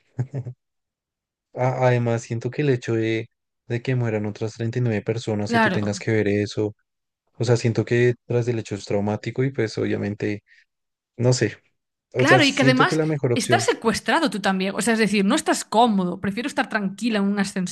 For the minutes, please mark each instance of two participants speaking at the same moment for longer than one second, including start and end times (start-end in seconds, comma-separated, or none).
12.2-13.6